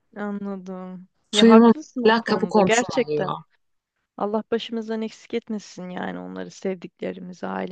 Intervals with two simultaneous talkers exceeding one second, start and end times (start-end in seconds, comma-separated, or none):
1.3-3.3